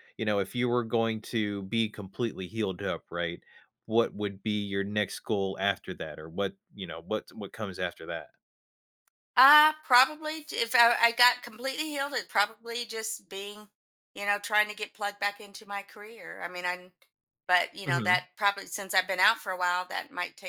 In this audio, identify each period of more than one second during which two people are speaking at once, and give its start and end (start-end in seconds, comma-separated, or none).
none